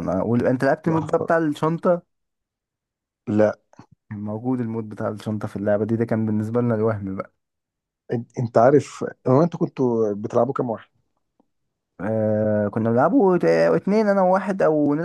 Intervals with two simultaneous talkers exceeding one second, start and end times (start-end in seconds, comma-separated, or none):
none